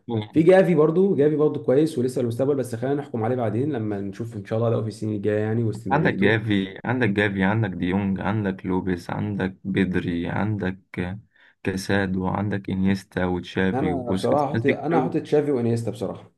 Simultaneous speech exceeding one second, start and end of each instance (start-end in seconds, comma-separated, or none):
13.7-15.2